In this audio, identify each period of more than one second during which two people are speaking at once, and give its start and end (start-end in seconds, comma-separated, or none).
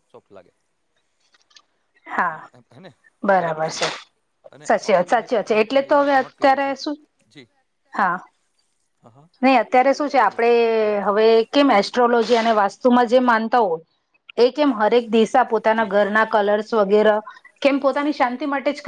4.7-6.7